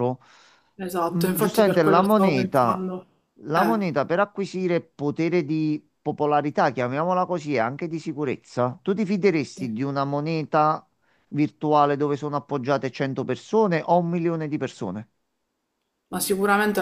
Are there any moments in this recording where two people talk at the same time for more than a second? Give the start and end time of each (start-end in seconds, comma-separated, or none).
1.0-2.9